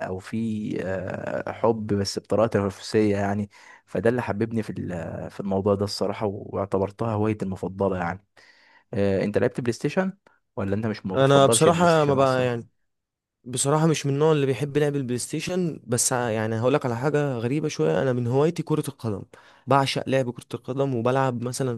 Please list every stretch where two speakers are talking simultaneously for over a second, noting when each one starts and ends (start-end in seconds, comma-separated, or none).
11.1-12.5